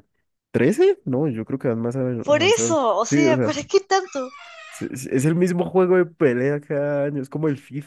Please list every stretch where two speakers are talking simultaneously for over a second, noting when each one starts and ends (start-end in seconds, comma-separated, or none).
2.2-3.6